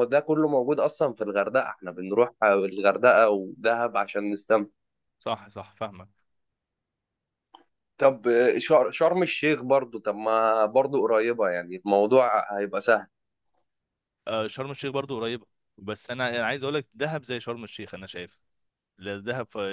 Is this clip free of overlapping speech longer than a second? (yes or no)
yes